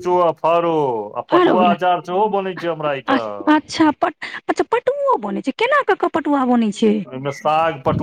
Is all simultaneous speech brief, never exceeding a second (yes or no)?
yes